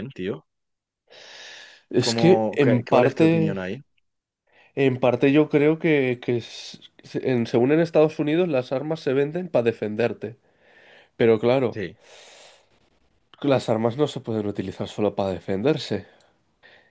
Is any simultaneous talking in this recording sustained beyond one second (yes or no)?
yes